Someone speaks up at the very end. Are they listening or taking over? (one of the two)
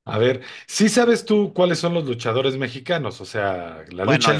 taking over